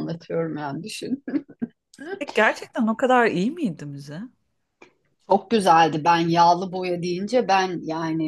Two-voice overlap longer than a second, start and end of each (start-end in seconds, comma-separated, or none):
none